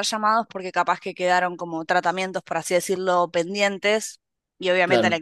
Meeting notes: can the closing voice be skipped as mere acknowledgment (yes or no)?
yes